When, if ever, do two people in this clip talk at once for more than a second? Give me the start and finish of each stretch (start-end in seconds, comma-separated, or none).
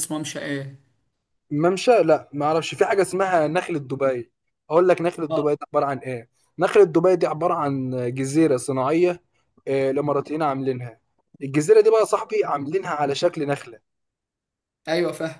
none